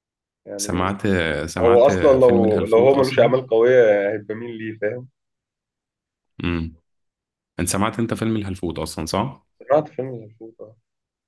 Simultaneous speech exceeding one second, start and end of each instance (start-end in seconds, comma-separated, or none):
1.6-3.3